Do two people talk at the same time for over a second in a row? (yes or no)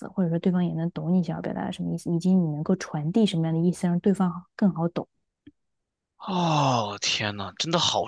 no